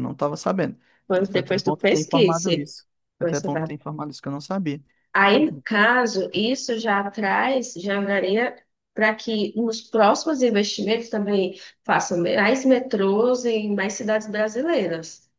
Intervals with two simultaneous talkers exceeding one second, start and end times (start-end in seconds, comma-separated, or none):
1.2-2.5